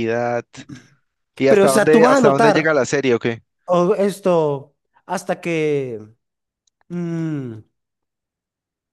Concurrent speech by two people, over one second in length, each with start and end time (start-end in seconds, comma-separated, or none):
1.5-2.7